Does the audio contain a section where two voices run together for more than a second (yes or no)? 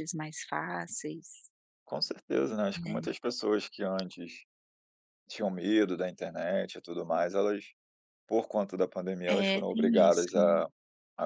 yes